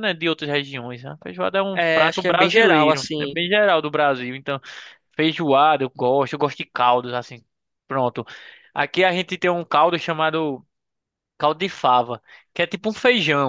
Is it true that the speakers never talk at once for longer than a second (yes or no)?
no